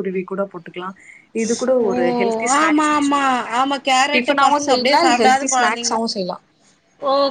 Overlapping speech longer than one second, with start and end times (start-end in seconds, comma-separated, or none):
4.2-6.0